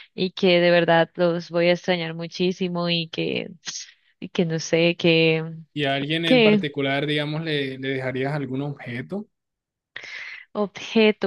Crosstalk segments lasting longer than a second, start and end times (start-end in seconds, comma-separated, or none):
none